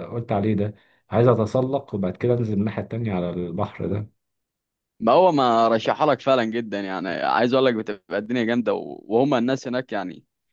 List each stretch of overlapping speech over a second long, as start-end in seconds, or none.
none